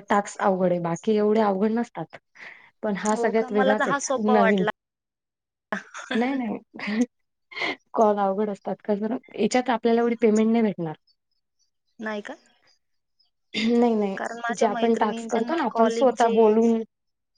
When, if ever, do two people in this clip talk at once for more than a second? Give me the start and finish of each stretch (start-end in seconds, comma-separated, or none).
3.1-4.6, 14.6-16.3